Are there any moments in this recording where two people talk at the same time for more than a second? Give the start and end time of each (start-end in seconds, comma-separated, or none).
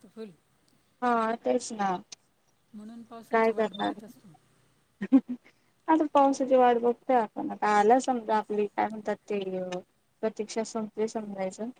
none